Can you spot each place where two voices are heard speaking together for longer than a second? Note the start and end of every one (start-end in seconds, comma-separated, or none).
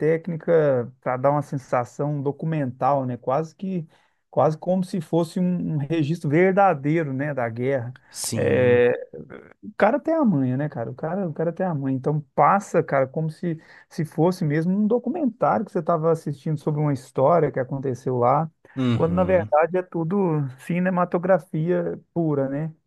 none